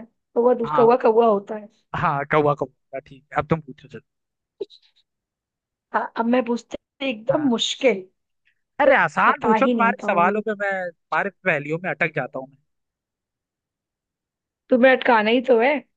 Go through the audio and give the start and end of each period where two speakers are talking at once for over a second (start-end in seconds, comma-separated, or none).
8.8-10.4